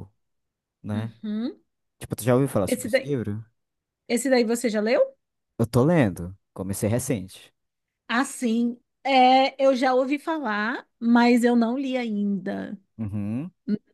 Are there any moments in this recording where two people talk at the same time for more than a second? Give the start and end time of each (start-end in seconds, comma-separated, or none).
none